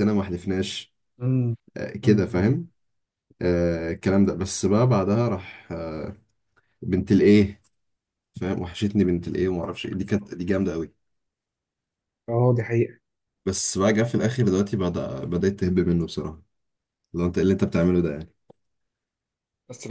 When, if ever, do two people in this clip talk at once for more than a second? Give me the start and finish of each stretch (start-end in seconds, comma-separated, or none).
none